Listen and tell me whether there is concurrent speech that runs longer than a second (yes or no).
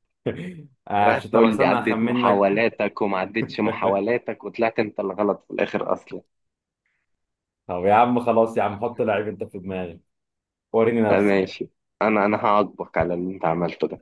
yes